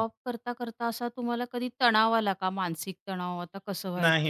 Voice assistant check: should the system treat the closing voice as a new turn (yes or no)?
yes